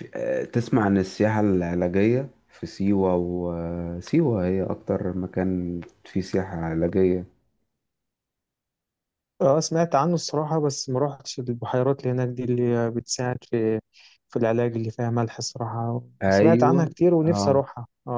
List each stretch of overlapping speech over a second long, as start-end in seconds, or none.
16.2-17.6